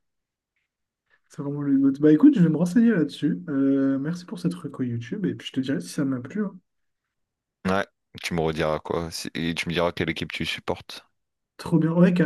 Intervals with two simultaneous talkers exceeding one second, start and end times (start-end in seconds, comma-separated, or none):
none